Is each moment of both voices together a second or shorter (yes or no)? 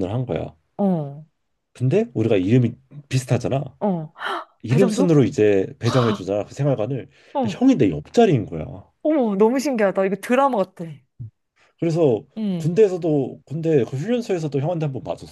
yes